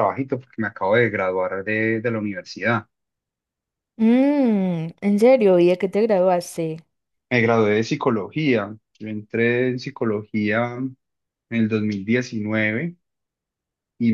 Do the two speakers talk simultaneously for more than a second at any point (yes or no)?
no